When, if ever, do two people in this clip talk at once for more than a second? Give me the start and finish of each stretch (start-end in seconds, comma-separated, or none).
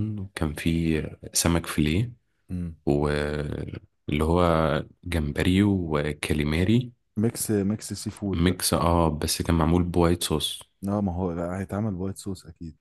none